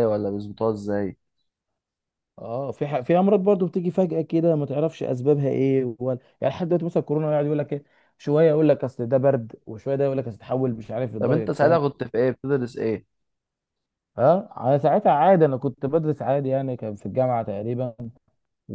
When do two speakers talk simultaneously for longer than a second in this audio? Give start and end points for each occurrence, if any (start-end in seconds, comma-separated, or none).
none